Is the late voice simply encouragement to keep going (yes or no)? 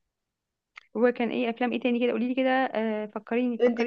no